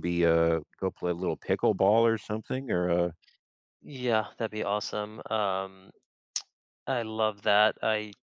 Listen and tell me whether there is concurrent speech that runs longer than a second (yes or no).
no